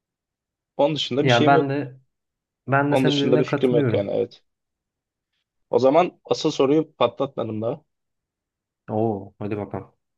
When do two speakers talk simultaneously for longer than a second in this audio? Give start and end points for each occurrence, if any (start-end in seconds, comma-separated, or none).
2.9-4.2